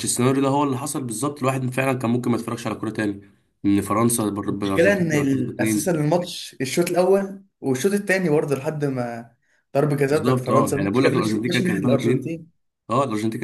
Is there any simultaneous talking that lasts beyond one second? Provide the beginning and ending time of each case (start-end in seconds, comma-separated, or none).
4.5-6.0, 10.1-12.4